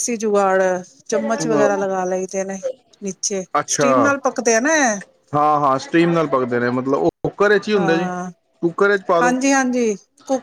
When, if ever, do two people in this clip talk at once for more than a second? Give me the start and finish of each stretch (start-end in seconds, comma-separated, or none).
none